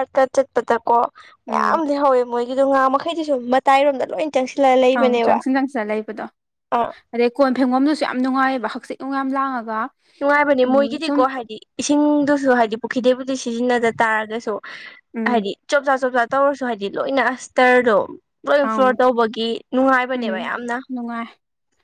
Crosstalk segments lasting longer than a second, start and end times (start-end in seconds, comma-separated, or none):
none